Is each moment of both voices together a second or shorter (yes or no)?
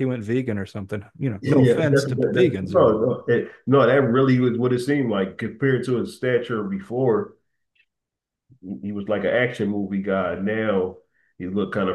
no